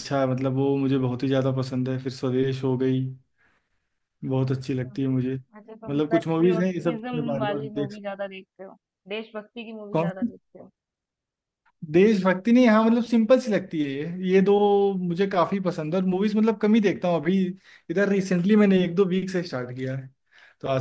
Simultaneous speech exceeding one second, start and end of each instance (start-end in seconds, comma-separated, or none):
5.9-8.0